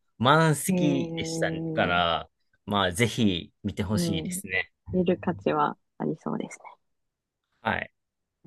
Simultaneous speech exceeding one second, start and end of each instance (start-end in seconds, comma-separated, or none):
0.7-2.0